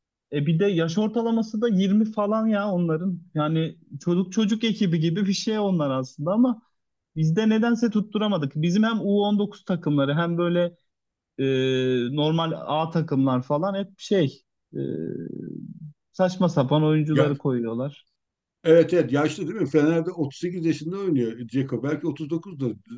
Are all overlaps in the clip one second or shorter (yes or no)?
yes